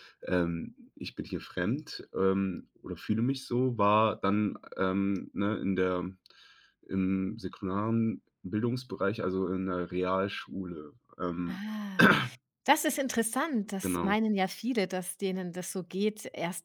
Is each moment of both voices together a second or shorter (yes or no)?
yes